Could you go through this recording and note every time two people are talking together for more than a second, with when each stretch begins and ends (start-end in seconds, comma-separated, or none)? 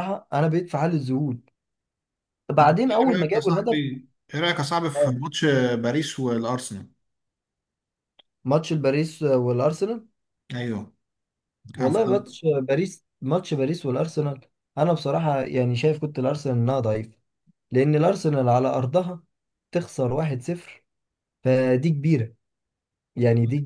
2.6-3.8